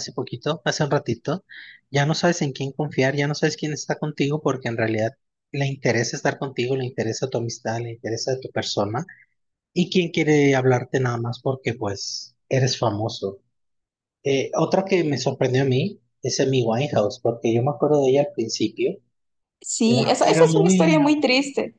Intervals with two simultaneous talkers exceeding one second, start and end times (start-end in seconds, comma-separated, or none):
19.8-21.2